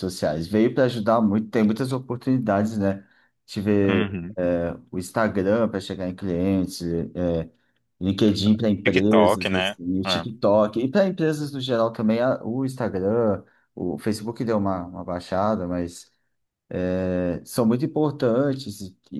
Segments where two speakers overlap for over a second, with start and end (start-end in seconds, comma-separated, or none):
8.8-10.3